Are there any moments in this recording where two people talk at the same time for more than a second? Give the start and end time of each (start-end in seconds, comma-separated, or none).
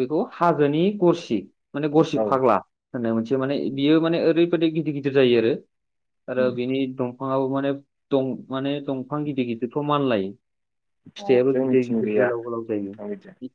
11.2-12.9